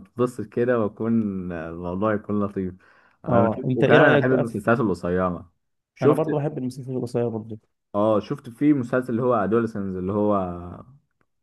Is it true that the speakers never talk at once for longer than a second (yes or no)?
no